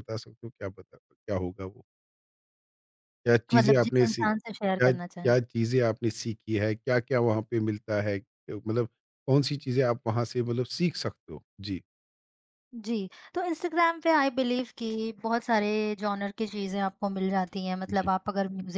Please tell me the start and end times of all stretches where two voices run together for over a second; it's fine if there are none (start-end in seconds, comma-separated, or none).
3.5-5.3